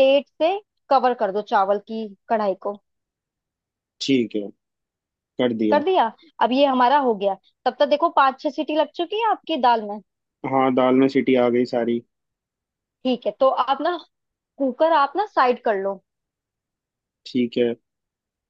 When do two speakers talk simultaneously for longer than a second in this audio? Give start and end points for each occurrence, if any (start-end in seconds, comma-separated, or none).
none